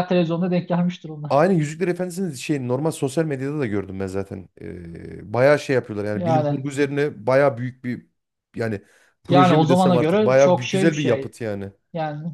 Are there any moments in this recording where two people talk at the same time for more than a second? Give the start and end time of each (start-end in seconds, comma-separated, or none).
9.3-11.3